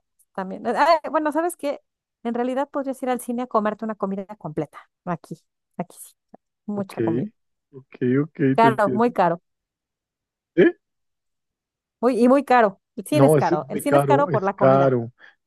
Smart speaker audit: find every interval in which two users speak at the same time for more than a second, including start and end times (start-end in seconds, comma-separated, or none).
13.1-14.9